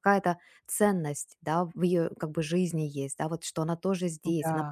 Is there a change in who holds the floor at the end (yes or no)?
no